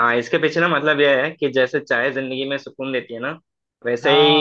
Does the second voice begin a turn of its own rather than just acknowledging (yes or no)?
no